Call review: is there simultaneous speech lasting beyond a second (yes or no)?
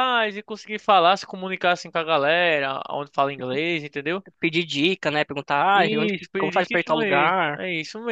yes